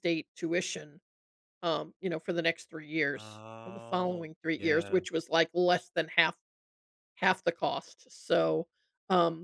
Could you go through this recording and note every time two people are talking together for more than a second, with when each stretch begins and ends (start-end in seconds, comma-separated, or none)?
3.1-5.0